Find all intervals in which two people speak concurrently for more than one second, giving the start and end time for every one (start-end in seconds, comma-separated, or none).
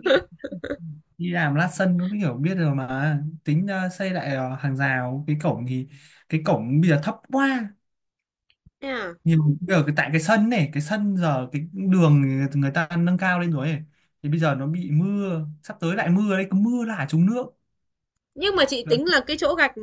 none